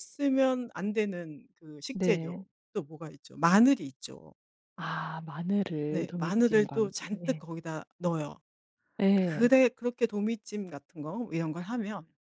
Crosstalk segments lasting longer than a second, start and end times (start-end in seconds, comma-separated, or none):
5.9-7.4